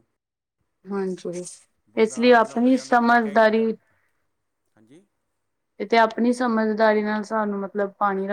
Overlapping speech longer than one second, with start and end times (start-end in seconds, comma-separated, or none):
2.0-3.7